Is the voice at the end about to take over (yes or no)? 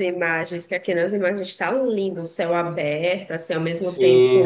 yes